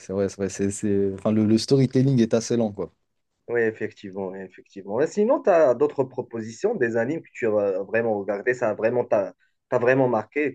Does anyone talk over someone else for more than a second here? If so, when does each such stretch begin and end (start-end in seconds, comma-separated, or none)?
none